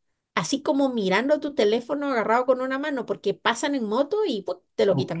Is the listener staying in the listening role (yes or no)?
no